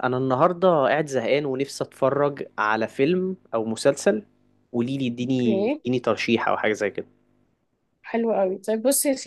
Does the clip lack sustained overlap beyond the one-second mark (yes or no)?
yes